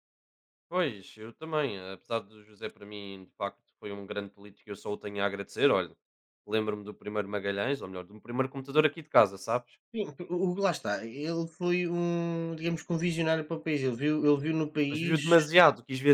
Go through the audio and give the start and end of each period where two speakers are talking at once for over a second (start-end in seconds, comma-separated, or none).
none